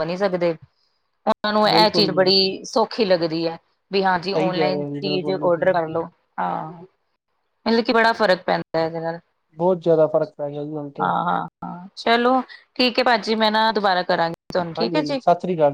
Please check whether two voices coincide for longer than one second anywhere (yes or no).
yes